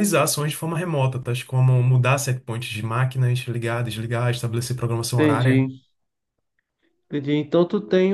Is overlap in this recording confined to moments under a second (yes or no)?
yes